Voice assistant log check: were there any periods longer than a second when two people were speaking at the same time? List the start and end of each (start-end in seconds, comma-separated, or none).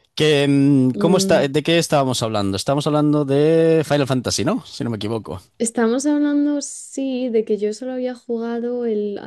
none